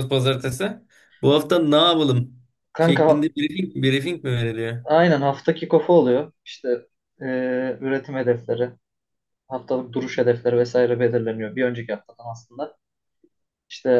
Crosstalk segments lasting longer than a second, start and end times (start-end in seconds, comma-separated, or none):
none